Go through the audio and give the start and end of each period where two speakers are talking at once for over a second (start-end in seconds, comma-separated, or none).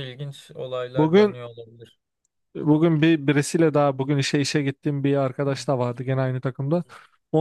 none